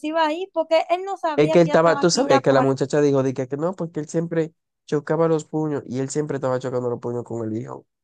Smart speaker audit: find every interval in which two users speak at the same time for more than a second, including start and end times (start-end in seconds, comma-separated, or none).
1.4-2.7